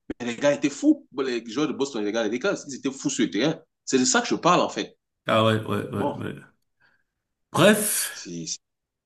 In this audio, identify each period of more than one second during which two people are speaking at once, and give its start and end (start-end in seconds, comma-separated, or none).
none